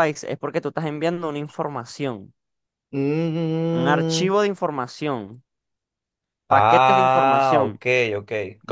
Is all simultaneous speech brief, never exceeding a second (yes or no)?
no